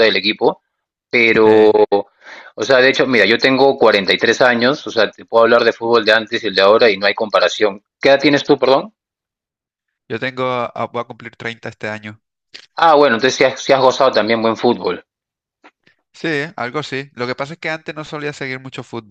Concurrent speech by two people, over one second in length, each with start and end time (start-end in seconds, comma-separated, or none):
none